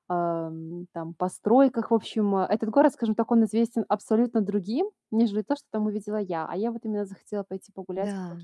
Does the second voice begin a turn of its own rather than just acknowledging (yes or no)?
no